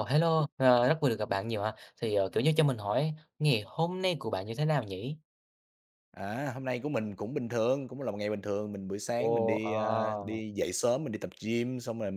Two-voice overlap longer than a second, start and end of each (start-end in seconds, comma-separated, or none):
9.2-10.4